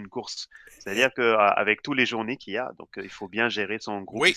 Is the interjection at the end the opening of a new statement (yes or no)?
yes